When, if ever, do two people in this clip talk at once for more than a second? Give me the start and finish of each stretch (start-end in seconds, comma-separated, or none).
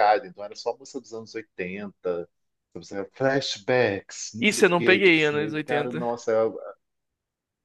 4.4-6.1